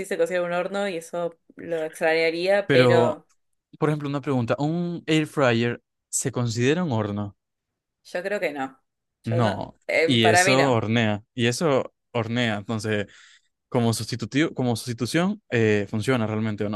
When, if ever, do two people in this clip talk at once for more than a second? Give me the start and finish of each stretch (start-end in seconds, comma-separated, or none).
9.2-10.8